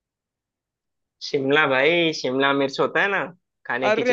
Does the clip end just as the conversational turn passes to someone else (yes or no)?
yes